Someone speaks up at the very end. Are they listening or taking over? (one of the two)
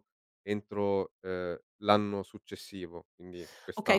taking over